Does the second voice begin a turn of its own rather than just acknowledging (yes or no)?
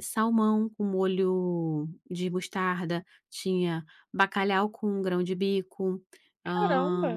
yes